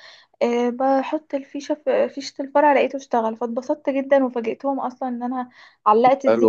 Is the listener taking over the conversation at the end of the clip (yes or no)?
yes